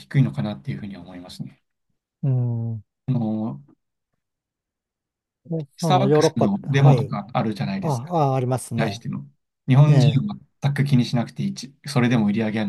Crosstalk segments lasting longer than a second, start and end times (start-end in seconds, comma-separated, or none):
5.8-7.2